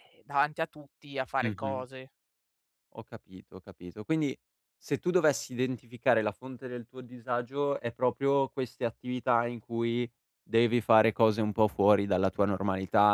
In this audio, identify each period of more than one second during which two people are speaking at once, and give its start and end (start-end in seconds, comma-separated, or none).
none